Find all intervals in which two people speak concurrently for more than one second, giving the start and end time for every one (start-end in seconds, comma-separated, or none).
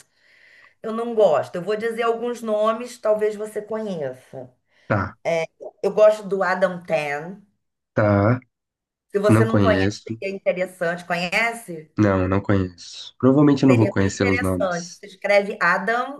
13.6-15.0